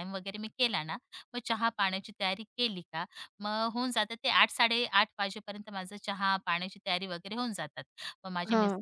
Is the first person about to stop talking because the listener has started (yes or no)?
no